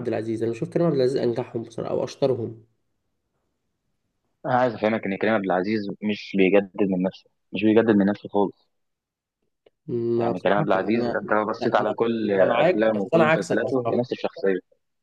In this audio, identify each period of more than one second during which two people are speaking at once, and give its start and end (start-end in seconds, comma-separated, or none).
10.2-11.9, 12.7-14.1